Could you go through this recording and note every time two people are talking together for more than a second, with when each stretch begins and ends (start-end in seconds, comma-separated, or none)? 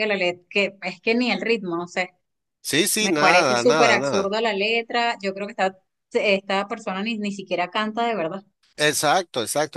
3.0-4.3